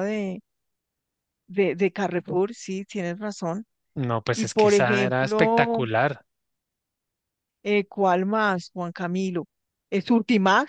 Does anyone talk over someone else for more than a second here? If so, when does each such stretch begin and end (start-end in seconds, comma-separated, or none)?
4.3-5.8